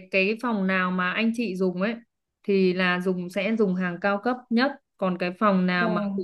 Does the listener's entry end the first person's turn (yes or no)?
no